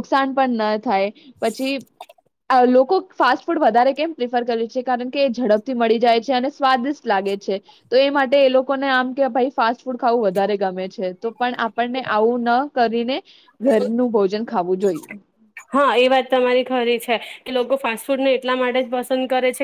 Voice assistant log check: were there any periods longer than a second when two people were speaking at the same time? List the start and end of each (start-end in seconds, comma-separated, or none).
none